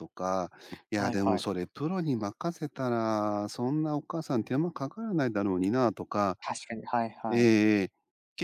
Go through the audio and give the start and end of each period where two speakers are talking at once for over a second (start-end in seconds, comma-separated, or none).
none